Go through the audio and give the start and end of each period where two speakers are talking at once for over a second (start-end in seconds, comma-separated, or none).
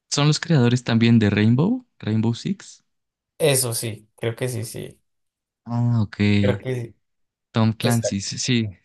none